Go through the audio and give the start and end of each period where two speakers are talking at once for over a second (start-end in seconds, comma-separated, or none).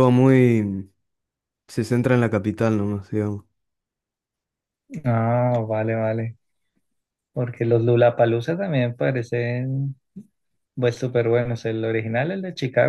none